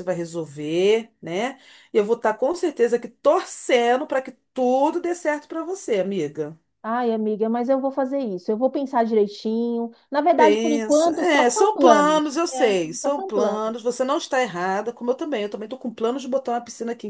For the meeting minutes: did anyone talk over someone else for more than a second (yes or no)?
yes